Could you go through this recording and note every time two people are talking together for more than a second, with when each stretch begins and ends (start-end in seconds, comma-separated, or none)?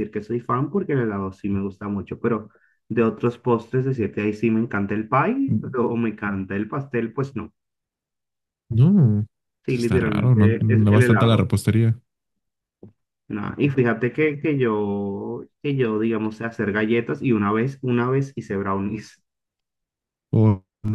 9.7-11.5